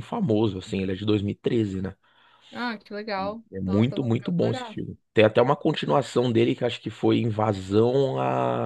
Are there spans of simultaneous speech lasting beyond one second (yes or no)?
yes